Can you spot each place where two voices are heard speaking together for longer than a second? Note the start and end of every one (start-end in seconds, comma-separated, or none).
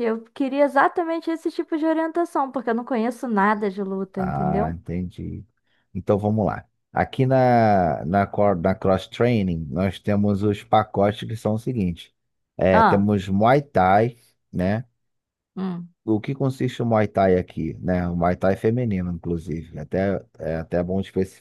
none